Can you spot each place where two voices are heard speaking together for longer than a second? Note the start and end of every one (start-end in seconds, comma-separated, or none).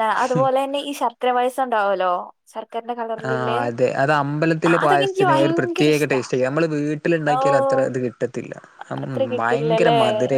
4.7-6.2